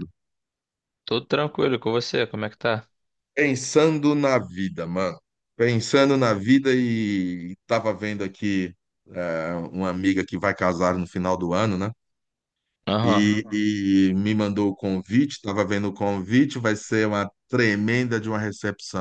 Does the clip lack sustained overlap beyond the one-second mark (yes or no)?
yes